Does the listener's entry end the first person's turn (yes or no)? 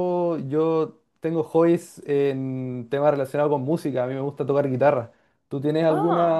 no